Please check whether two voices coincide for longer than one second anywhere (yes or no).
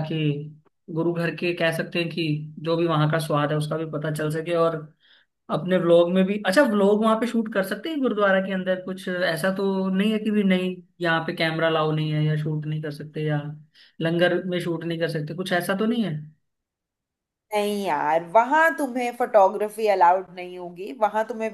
no